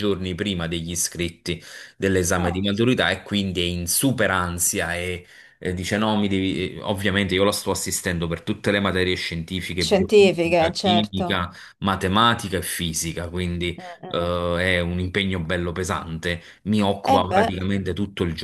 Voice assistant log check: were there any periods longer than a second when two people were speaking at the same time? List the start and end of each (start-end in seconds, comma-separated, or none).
9.8-11.4